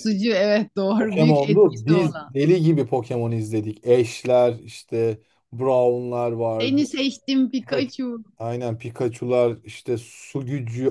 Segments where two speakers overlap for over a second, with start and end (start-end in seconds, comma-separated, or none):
1.0-2.3